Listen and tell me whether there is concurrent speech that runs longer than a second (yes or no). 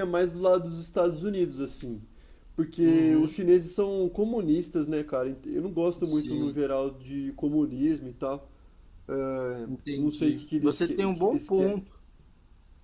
yes